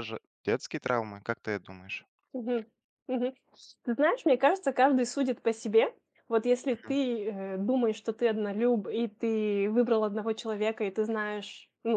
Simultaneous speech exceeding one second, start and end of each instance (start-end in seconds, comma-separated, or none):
none